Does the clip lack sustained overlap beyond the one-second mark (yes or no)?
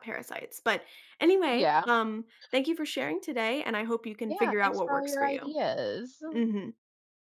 no